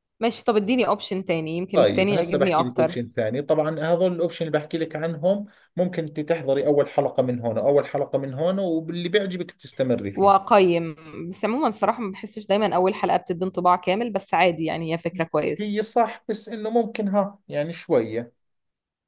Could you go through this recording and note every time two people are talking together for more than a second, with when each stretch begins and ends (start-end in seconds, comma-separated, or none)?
1.7-3.0